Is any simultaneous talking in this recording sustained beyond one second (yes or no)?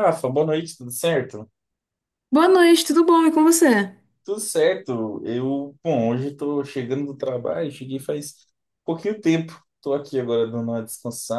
no